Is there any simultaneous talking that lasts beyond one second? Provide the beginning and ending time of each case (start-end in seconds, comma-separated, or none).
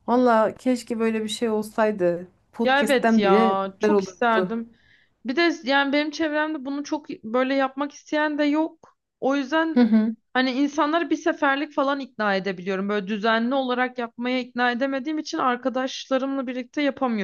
2.6-4.5